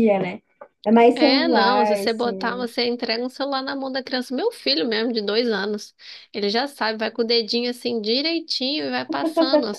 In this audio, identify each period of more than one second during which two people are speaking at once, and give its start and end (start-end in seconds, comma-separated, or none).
1.1-2.7